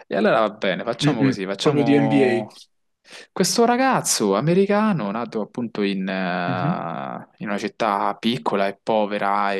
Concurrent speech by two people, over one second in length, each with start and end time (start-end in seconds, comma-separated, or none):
1.0-2.5